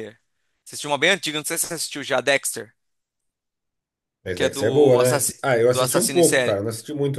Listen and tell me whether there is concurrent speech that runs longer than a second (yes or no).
yes